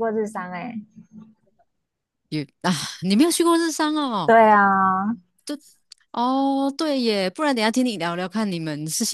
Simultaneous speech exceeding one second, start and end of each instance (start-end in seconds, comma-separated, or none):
none